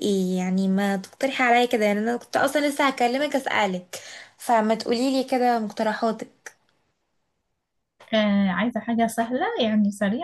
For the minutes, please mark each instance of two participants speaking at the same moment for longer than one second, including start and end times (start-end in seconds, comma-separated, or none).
none